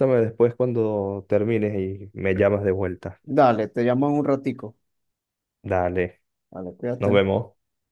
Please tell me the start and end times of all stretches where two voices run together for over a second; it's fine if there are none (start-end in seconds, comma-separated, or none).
none